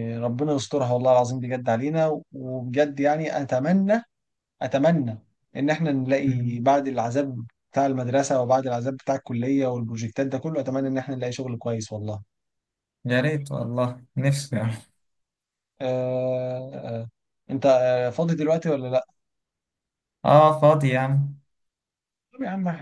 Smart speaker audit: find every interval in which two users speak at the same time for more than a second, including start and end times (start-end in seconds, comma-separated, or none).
none